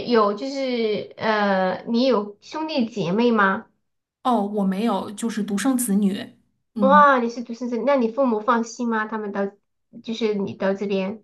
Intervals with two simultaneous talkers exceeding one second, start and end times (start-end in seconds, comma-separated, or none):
none